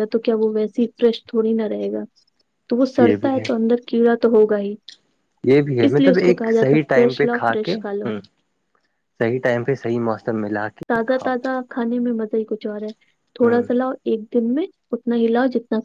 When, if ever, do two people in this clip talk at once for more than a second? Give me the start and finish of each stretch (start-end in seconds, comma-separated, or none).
5.8-7.8